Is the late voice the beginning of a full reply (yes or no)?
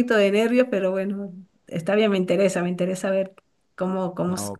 no